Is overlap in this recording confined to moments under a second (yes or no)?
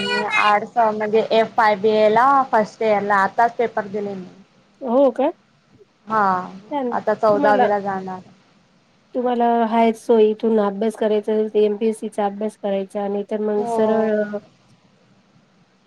yes